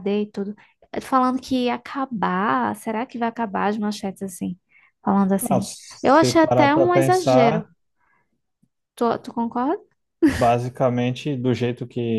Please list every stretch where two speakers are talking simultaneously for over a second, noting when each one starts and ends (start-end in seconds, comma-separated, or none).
5.4-7.7